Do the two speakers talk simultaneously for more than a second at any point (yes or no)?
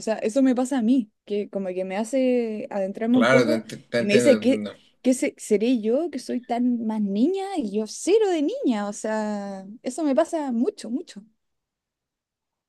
yes